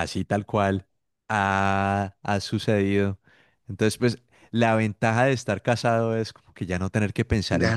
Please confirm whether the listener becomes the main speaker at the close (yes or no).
yes